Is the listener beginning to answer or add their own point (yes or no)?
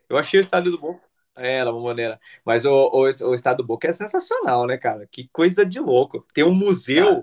no